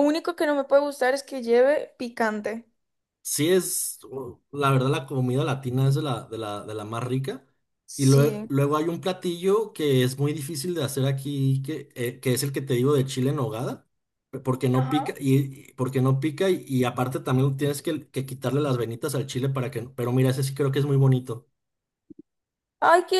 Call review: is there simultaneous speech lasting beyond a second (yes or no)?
no